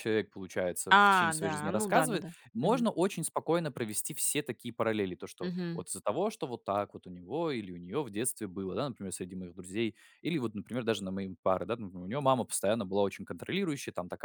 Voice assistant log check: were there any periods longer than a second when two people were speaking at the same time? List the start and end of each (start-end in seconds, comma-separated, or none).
0.9-2.9